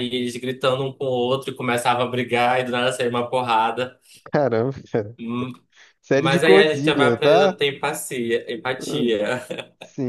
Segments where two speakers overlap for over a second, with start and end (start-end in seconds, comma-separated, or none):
6.2-7.6